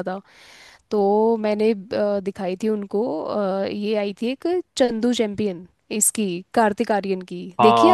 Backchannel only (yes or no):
no